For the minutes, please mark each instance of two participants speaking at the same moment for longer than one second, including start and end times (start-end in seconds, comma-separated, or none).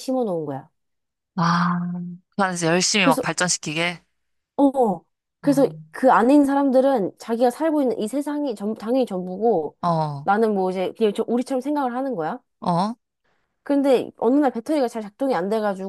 none